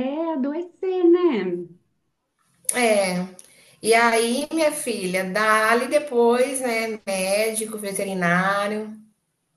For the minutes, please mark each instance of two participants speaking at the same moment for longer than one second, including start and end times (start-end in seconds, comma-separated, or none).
none